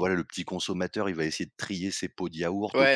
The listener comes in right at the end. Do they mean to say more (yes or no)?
yes